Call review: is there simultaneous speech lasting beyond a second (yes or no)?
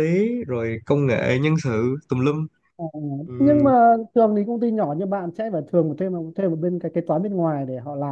no